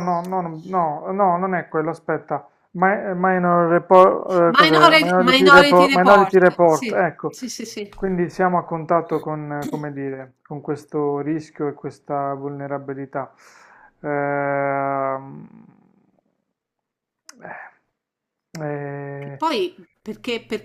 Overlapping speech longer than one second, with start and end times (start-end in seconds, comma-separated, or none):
4.5-7.3